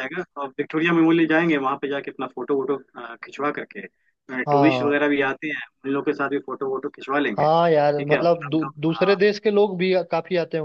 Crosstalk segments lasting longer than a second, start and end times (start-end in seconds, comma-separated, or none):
7.4-9.2